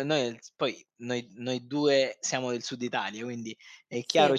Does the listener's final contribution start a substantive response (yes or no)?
no